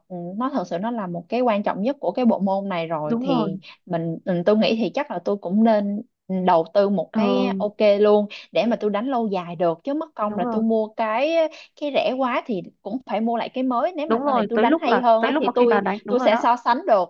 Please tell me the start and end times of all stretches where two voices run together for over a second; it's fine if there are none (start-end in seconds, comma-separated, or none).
14.1-16.4